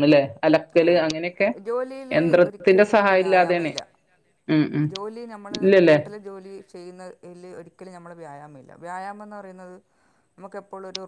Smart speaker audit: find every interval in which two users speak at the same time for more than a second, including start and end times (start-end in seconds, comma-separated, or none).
2.2-3.7